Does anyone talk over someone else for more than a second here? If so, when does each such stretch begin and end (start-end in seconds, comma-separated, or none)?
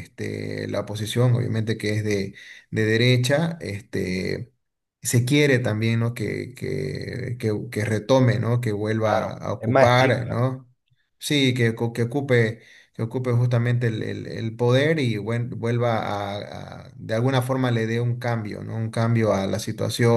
9.0-10.4